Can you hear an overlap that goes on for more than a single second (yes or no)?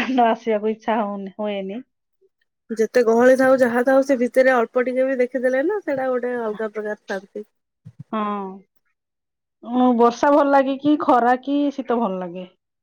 no